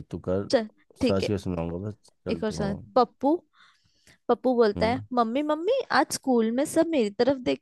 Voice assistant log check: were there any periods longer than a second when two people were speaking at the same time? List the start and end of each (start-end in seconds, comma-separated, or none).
none